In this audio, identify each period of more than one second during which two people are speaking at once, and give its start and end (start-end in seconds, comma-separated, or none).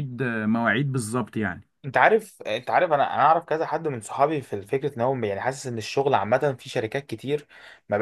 none